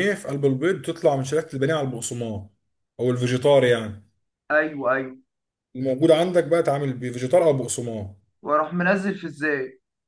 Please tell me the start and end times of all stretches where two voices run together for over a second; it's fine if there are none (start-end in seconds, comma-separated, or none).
none